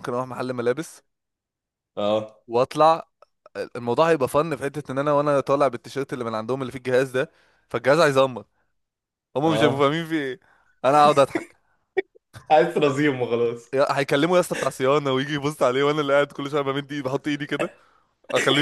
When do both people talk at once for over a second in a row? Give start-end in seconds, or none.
none